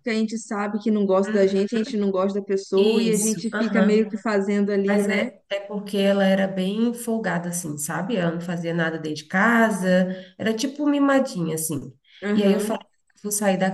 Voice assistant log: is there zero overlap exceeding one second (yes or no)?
no